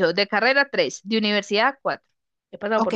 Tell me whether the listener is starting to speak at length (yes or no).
yes